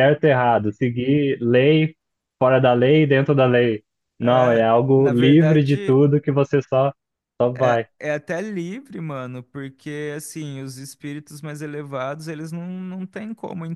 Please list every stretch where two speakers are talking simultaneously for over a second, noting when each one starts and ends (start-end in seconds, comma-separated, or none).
4.2-6.0